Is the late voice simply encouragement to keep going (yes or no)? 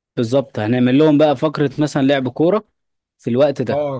no